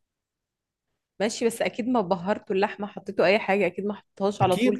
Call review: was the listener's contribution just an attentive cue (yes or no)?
no